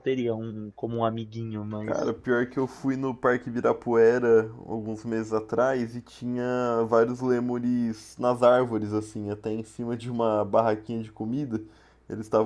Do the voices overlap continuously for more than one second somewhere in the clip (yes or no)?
no